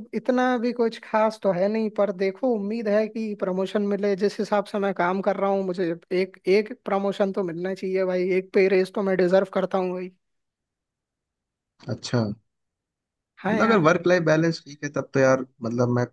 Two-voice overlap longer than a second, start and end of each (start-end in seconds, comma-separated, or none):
none